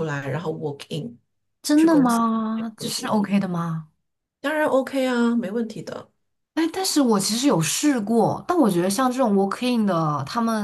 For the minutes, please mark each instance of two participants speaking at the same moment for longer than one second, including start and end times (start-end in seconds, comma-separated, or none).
1.8-3.2